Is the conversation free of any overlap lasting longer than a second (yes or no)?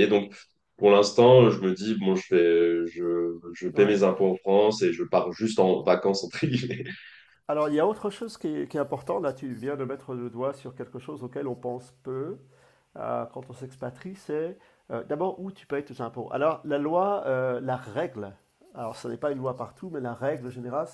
yes